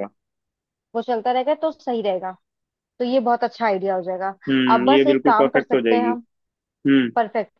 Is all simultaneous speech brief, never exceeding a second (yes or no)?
no